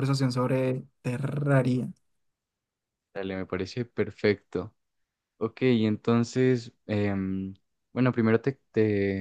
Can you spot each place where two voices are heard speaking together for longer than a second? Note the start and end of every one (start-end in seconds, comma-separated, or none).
none